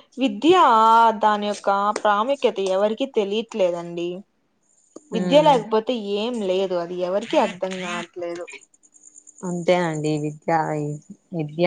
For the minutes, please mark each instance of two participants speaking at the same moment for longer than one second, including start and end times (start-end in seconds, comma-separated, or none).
none